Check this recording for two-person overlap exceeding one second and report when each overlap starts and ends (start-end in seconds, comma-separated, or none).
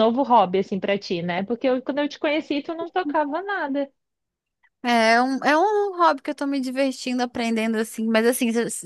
none